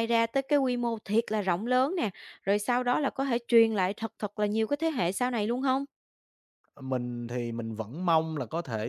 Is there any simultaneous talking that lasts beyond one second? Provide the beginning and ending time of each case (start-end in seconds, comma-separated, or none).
none